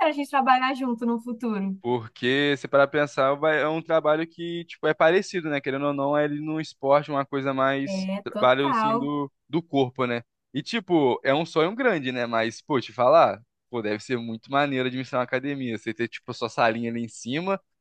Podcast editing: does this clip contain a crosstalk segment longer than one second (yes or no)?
yes